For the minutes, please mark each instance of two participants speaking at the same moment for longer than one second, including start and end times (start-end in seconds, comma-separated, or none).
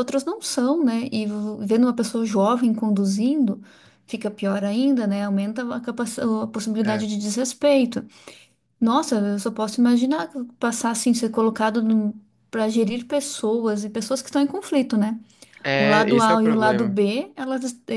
15.8-17.0